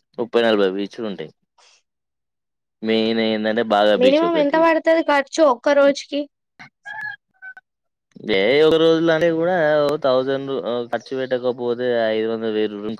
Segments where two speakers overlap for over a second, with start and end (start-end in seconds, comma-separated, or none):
none